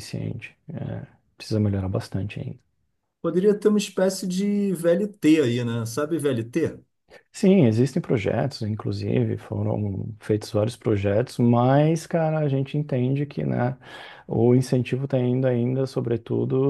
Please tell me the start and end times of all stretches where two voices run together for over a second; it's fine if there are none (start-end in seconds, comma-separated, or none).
none